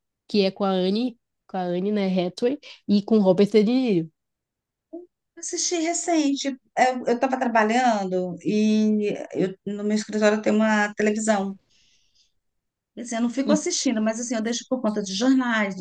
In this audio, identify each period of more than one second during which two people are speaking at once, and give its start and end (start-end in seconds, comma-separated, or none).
none